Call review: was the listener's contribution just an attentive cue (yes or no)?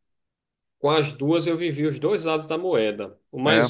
yes